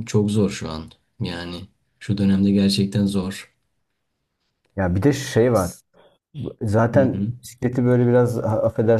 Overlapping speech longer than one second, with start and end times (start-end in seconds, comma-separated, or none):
none